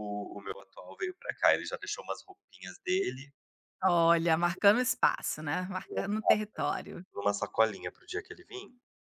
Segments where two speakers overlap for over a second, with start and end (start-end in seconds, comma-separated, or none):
none